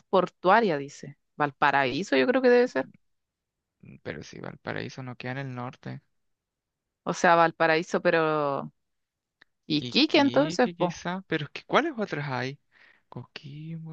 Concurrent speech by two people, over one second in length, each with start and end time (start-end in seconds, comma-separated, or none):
9.7-11.0